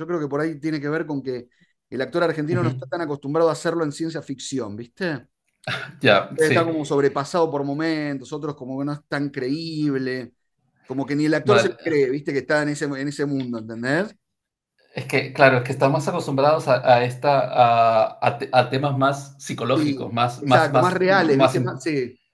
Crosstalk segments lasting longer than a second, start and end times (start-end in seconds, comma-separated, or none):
19.7-21.8